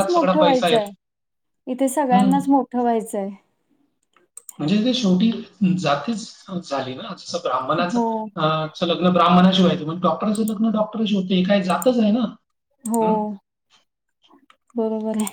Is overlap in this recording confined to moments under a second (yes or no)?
yes